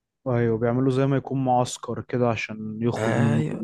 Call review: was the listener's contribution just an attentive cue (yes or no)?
no